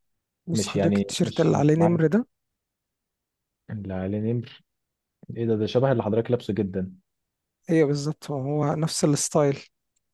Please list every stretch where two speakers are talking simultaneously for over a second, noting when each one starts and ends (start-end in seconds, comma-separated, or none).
0.5-2.0